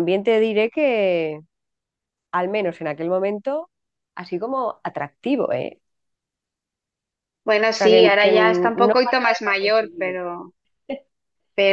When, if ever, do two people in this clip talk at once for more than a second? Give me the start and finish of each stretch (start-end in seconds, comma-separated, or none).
7.7-10.2